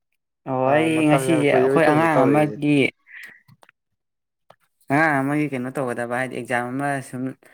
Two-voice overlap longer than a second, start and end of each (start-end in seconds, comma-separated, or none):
0.7-2.6